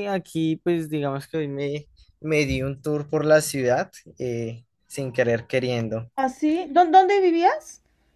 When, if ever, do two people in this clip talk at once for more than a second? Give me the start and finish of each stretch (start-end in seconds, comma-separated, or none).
none